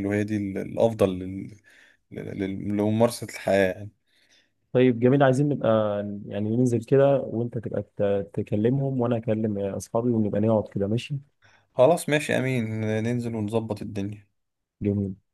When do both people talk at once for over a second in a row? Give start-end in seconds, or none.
none